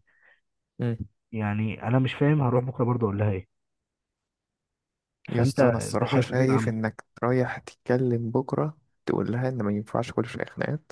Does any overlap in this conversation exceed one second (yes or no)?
yes